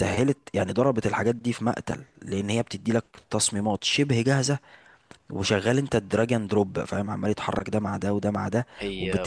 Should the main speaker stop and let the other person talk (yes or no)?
no